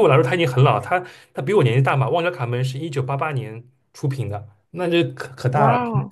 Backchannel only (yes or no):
yes